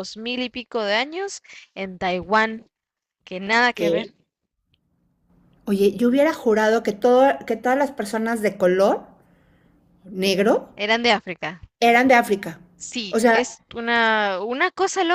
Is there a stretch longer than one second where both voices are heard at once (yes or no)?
no